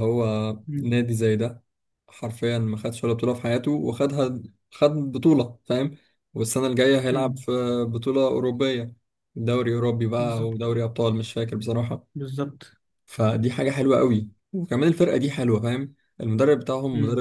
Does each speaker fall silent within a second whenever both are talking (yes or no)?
yes